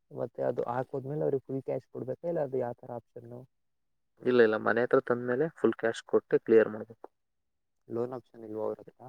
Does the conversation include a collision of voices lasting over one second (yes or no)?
yes